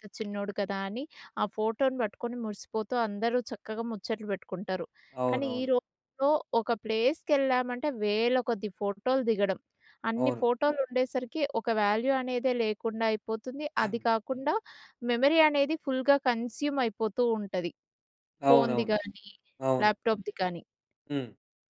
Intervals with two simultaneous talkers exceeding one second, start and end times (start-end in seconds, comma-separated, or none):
none